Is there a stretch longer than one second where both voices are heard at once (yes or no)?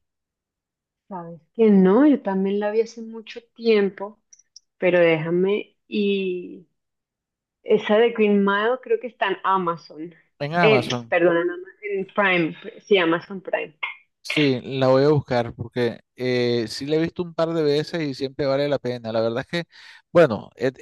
no